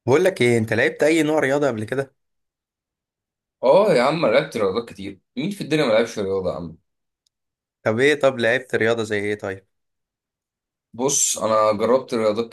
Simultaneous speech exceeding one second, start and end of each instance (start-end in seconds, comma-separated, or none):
none